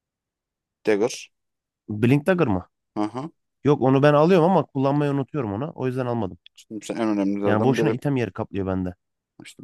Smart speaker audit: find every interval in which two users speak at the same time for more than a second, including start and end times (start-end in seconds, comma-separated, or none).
none